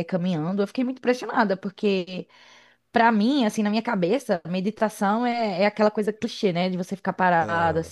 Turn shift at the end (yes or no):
no